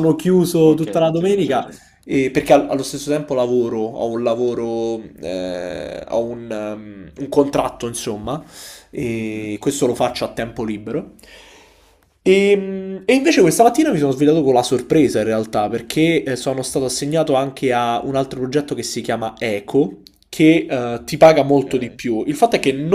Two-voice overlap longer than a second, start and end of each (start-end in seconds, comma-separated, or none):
0.6-1.8